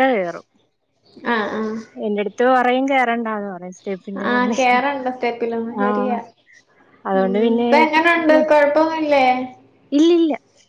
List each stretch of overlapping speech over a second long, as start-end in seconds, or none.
none